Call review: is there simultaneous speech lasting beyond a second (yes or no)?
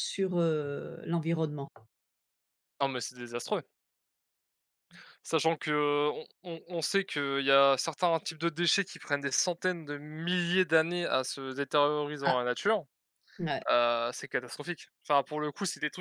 no